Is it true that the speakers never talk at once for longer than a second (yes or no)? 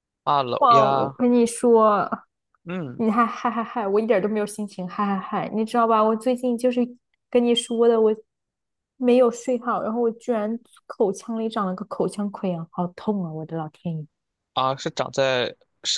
yes